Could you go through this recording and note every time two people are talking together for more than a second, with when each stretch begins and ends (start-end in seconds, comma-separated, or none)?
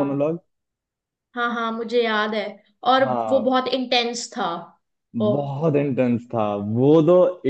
none